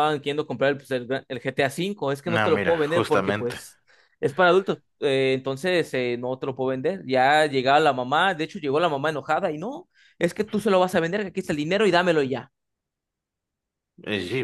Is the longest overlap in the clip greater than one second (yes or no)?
yes